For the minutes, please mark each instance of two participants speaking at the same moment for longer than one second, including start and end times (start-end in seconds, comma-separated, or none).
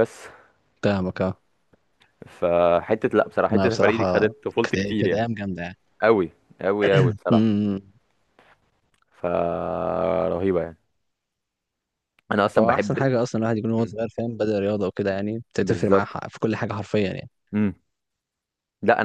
3.5-5.2